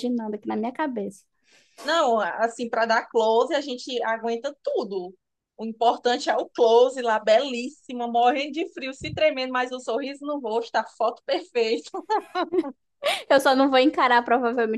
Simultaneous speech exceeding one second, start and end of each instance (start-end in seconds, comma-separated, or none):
none